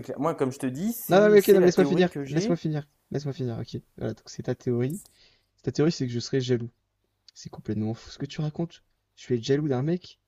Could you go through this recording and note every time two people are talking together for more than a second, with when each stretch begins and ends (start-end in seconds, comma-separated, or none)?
1.1-2.6